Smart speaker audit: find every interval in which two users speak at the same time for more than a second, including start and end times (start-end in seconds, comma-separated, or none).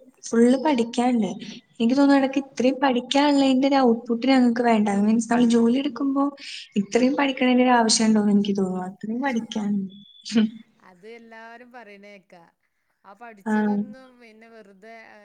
none